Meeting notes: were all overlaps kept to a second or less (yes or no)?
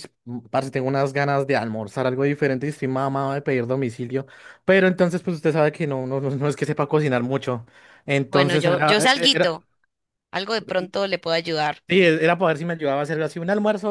no